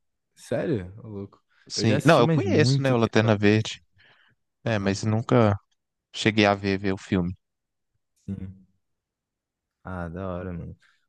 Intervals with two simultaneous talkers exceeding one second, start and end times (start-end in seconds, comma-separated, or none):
1.7-3.6